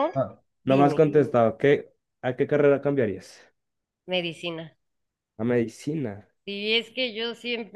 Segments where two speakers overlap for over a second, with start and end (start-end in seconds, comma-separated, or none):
none